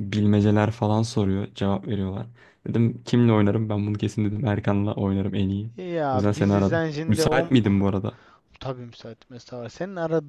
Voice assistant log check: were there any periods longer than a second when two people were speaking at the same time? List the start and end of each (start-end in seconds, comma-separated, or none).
6.1-7.8